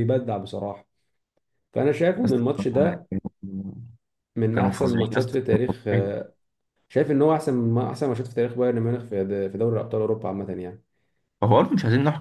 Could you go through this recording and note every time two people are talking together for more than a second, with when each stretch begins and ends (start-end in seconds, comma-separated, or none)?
4.5-6.2